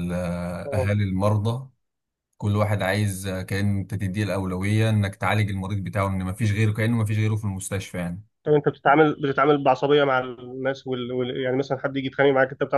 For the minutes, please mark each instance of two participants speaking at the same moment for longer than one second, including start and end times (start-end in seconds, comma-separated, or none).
none